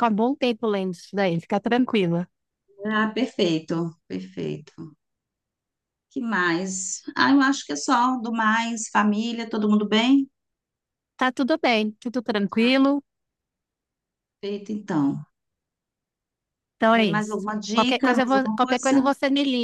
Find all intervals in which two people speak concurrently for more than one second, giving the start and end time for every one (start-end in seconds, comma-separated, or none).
16.9-19.1